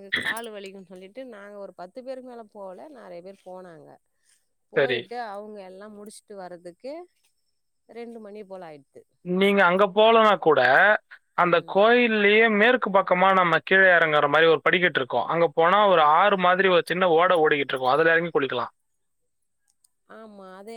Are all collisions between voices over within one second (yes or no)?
yes